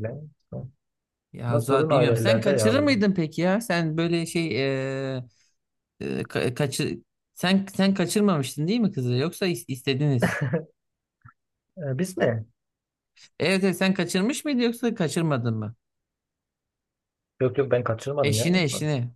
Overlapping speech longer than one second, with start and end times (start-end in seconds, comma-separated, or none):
1.5-3.0